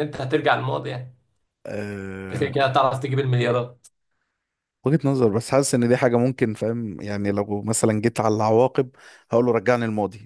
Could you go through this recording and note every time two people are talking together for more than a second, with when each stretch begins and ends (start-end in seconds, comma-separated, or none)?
none